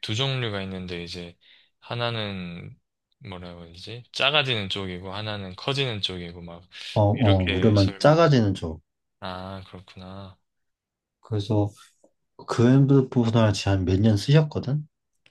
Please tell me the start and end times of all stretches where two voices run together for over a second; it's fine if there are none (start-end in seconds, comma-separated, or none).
7.1-8.3